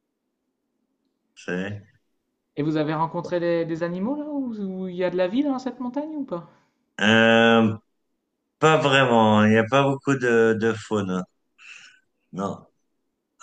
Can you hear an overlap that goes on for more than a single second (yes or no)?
no